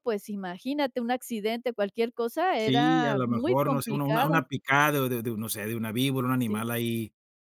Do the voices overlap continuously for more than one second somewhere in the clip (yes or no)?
yes